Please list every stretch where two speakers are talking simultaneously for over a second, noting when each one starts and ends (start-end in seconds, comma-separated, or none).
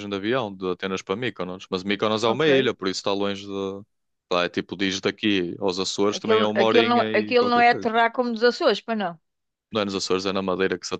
6.2-7.9